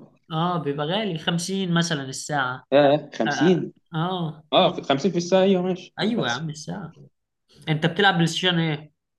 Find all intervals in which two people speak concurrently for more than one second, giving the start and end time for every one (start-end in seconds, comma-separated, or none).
none